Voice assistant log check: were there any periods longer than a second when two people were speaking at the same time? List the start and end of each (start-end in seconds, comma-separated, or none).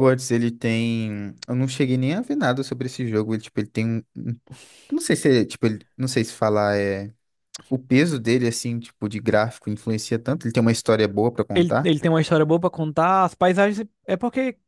none